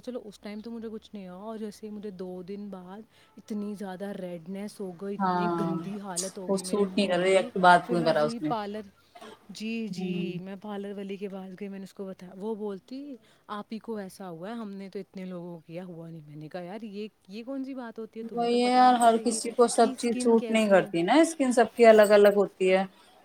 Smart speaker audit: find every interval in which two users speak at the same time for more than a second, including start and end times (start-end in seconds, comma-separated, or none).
6.5-8.5, 18.3-20.9